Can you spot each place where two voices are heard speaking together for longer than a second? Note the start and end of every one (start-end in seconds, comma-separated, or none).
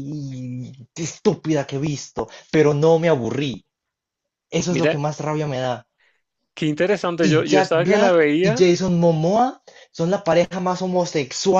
7.2-8.7